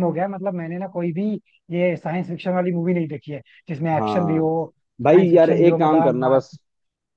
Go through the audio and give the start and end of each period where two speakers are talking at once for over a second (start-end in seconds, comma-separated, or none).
5.1-6.4